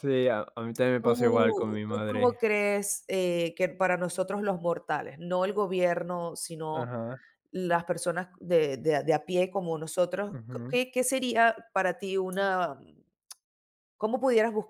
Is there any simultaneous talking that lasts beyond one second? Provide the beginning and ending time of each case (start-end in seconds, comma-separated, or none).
1.0-2.4